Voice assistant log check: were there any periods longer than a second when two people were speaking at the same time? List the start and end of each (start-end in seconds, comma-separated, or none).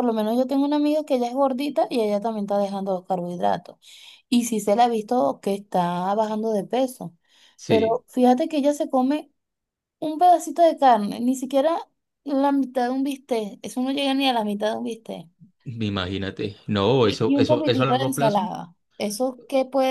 17.0-18.5